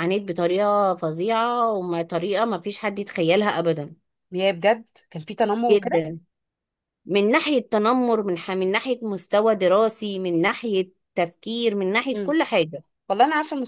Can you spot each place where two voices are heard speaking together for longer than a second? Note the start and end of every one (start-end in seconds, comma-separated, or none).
none